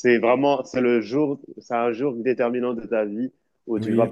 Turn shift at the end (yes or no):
no